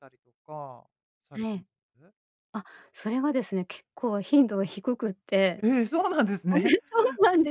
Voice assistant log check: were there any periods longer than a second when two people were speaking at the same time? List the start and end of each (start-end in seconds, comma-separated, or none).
none